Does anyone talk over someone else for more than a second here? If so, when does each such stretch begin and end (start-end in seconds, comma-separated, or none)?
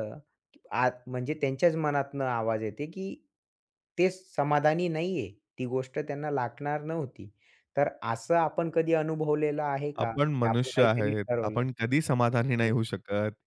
10.0-11.6